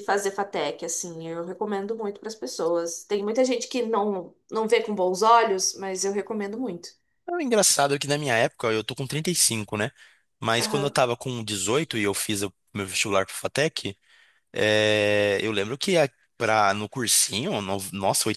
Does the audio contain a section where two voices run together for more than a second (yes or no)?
no